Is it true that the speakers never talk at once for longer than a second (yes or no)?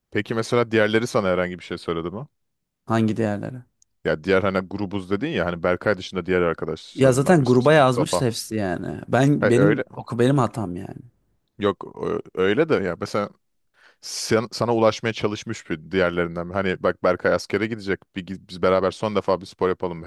no